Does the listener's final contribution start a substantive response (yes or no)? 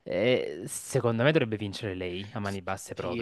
yes